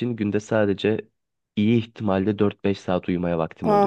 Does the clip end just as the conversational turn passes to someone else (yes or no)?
yes